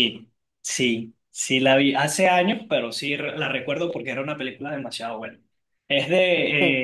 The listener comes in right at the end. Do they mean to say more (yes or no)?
no